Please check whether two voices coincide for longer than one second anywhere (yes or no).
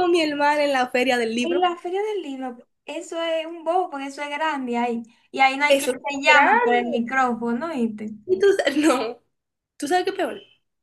yes